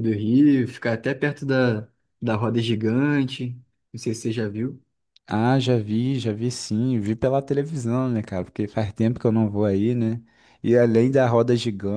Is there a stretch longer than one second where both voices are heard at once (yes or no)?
no